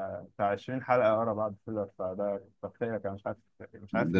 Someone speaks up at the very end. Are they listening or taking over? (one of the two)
taking over